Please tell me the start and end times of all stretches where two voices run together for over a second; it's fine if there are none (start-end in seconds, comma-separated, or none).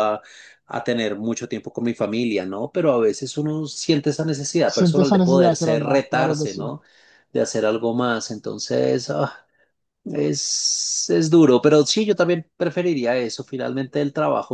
4.7-6.7